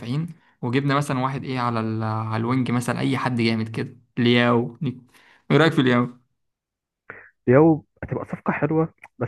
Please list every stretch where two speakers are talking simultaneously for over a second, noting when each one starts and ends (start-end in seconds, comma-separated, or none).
none